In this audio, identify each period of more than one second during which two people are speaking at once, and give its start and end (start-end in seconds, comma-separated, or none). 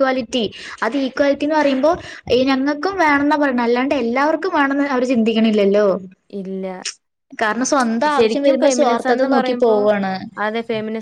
8.2-9.8